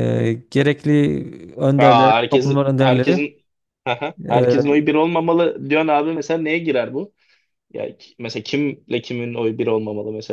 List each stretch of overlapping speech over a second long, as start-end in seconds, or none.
1.8-3.3